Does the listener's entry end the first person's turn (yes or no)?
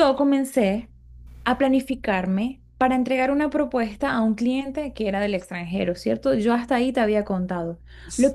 no